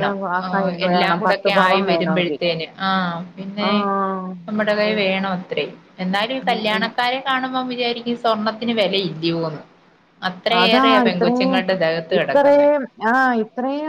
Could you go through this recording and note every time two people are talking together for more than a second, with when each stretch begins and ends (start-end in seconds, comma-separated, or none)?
0.9-2.4